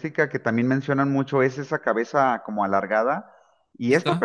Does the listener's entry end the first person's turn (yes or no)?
no